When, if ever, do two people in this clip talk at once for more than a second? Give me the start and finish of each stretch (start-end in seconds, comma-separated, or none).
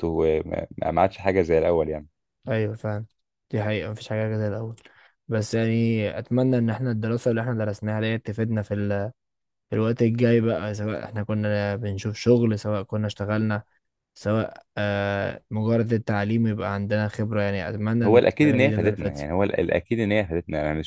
18.0-19.3